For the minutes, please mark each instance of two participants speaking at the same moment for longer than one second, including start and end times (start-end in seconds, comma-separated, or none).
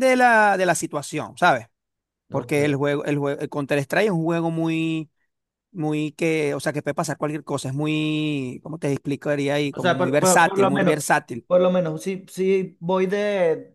9.7-11.0